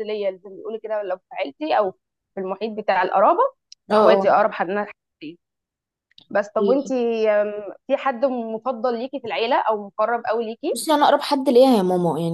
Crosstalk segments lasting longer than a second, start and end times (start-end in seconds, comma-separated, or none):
none